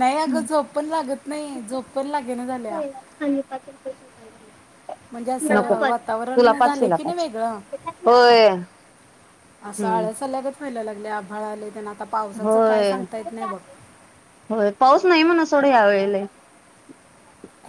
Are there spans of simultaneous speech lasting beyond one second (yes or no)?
yes